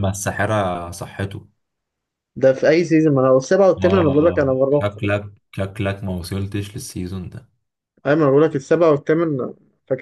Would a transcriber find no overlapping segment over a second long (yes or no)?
no